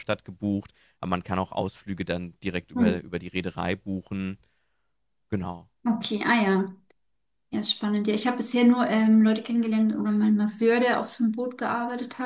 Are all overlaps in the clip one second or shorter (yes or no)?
yes